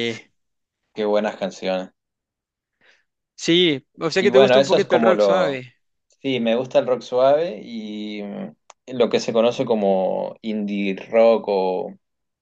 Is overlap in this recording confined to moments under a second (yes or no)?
no